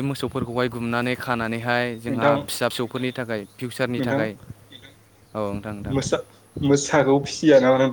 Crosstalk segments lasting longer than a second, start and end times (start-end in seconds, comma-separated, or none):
none